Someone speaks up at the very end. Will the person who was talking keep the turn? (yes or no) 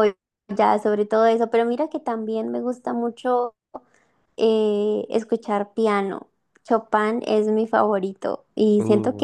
yes